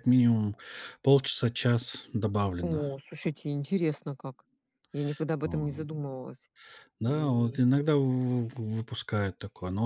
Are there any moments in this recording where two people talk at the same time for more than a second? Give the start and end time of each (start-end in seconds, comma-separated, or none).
none